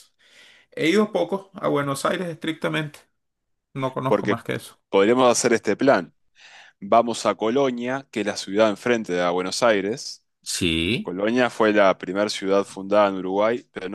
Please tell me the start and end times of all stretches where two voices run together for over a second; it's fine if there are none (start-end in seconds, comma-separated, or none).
none